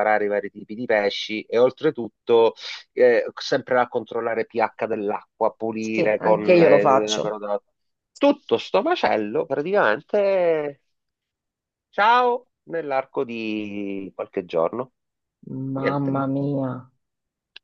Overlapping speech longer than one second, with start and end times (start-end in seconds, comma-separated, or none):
5.9-7.3